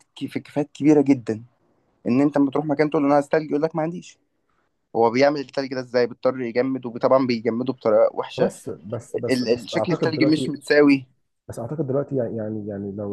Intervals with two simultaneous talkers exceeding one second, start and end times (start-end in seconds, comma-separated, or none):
9.3-10.5